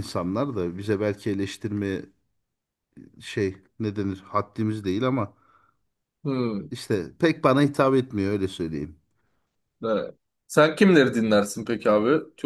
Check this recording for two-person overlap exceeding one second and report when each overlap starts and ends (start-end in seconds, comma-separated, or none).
none